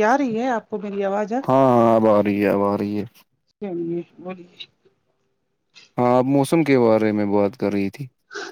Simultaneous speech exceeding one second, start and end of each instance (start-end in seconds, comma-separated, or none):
none